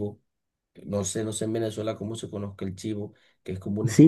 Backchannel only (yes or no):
no